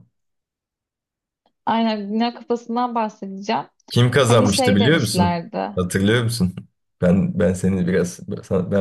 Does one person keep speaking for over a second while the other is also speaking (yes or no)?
yes